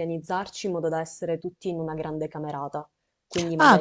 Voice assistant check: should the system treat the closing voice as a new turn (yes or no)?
yes